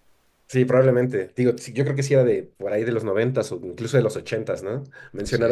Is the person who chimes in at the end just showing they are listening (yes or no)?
yes